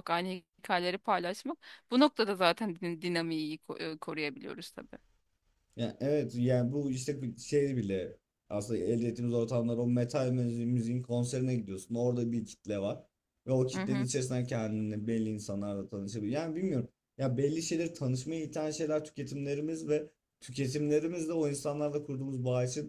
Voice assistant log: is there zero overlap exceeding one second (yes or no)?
yes